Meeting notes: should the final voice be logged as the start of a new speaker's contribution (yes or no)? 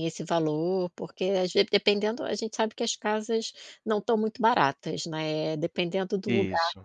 no